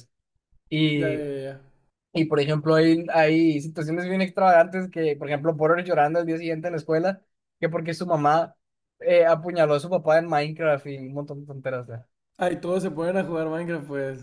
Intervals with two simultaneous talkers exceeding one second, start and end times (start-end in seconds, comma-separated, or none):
none